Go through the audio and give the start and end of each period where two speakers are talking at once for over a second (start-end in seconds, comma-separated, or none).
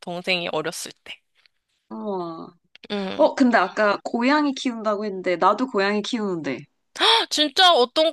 none